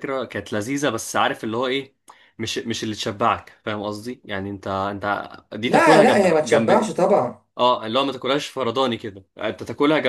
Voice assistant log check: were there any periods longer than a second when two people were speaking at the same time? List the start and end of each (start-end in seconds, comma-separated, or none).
5.6-7.0